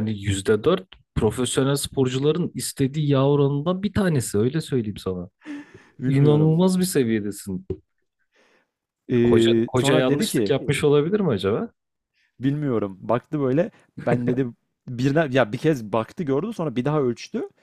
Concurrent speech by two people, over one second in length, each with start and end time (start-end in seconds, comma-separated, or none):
9.2-10.5